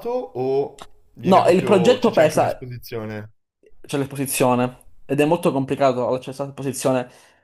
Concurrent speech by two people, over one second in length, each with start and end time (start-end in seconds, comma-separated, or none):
1.3-2.7